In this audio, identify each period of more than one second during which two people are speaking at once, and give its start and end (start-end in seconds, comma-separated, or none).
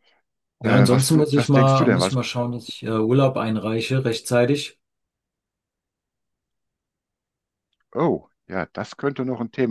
0.6-2.2